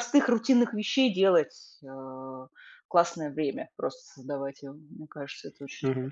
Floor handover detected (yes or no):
yes